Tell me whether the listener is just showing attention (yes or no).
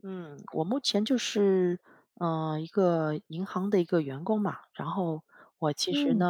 yes